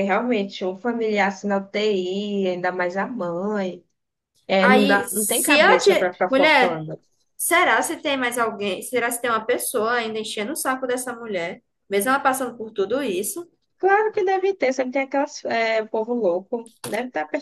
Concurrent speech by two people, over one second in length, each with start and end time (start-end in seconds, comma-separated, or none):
4.6-6.8